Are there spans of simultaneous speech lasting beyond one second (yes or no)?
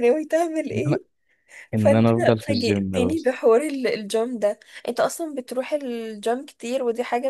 yes